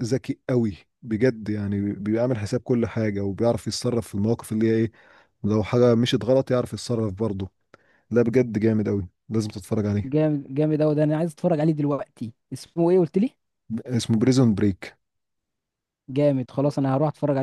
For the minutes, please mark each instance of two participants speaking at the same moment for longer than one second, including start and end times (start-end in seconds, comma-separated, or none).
none